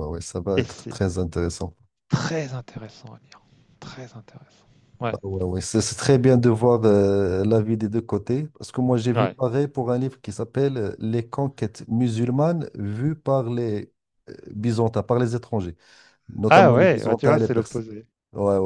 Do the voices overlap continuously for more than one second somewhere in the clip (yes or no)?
yes